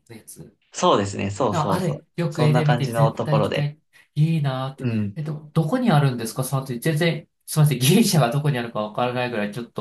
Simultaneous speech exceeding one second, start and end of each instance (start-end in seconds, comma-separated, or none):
1.5-3.7